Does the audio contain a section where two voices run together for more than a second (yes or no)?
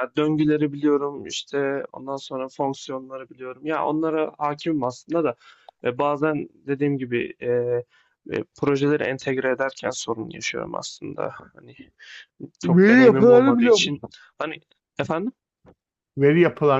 yes